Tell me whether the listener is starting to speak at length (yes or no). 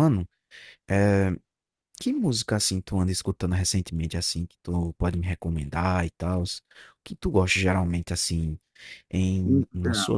no